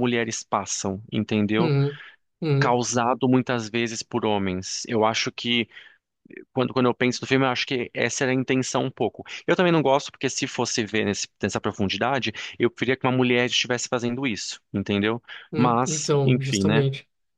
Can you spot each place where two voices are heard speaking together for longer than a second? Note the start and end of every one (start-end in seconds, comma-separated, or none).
15.5-16.9